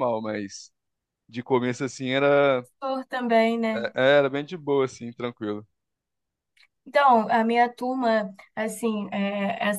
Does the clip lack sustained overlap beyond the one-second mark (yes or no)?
yes